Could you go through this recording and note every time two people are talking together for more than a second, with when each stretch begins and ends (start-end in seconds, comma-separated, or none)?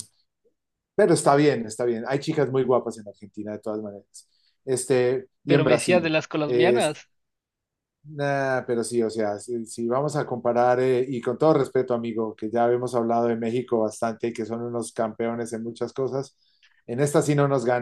5.5-7.0